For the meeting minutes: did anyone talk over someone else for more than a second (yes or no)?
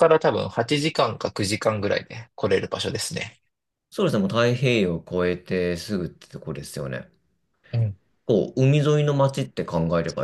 no